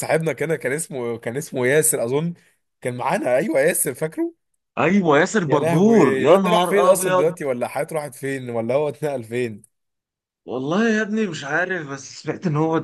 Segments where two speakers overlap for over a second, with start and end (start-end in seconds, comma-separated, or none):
5.5-7.3